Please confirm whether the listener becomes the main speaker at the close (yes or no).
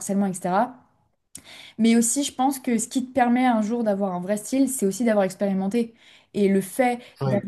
no